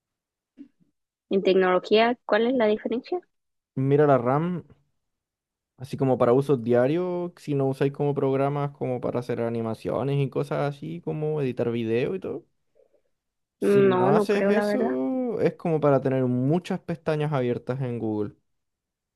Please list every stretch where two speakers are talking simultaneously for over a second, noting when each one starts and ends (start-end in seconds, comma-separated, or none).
13.6-15.0